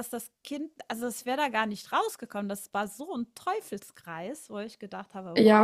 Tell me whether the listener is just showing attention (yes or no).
no